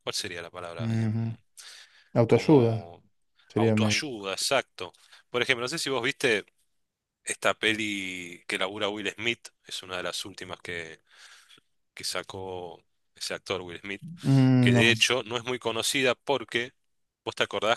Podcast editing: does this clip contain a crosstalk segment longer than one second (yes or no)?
no